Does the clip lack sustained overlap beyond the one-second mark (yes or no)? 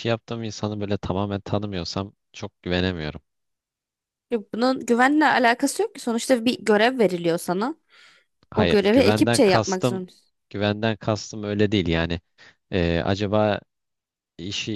no